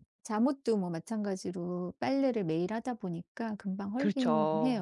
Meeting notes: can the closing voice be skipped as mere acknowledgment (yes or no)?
no